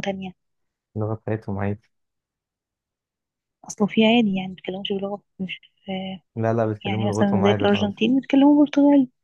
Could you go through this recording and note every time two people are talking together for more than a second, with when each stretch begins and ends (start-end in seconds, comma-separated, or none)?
6.8-8.1